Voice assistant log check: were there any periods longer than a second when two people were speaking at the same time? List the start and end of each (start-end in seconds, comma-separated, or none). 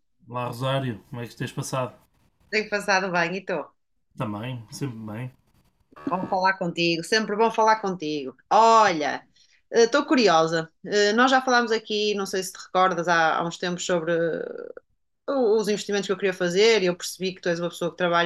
none